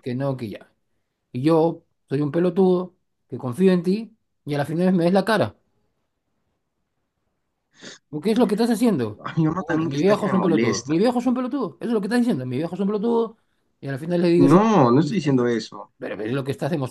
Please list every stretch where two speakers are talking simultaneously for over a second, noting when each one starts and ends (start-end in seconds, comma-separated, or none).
9.6-10.9